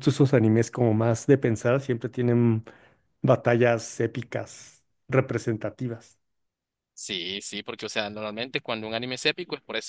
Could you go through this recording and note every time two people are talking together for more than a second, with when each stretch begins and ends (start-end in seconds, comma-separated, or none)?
none